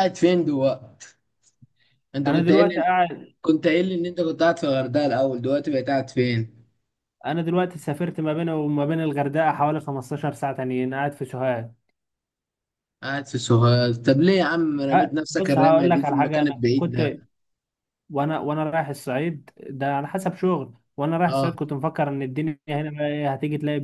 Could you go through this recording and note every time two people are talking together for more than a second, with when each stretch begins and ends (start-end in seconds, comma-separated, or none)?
14.9-17.0